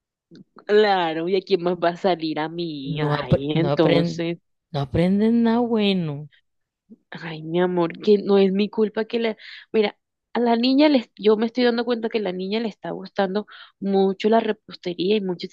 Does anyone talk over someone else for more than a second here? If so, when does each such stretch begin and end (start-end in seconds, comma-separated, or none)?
2.8-4.2